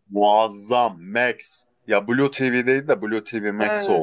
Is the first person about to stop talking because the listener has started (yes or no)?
yes